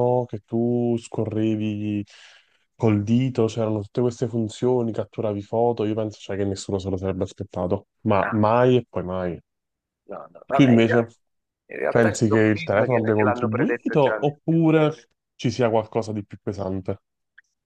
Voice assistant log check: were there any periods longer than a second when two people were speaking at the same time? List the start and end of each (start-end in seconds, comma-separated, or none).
11.9-14.3